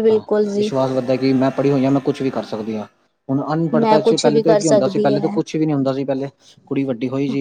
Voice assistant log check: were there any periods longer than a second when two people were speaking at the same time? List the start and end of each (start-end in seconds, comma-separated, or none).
3.8-5.3